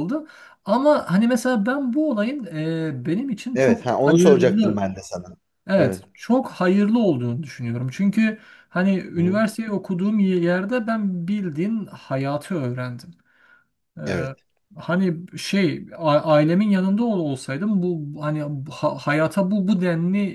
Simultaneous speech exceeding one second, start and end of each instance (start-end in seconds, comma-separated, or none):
3.5-4.8